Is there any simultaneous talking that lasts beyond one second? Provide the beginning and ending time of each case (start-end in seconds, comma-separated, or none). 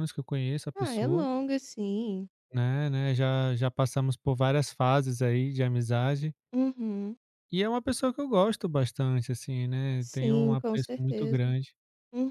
10.0-11.4